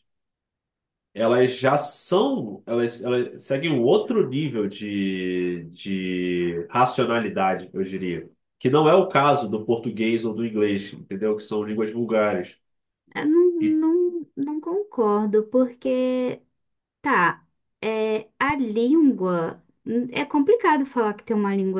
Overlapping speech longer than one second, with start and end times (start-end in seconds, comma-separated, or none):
none